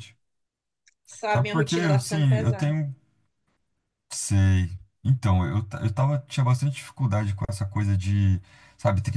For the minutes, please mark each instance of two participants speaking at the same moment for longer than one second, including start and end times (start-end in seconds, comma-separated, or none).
1.3-2.8